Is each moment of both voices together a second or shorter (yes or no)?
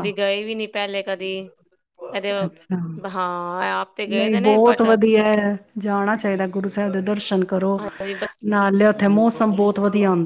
yes